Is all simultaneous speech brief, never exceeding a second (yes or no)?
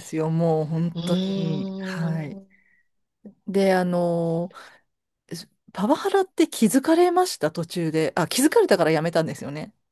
no